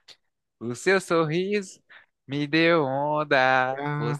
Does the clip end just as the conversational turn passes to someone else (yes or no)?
no